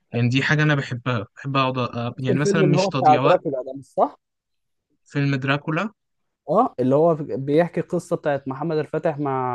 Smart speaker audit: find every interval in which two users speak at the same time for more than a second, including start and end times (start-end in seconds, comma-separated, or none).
2.2-3.4